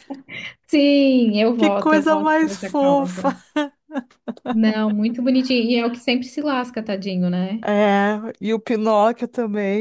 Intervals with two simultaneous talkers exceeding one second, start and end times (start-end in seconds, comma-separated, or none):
1.6-3.4